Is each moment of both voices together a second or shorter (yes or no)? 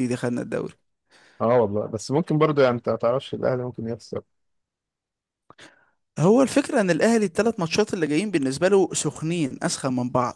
yes